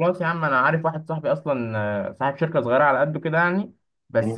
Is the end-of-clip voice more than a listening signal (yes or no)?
no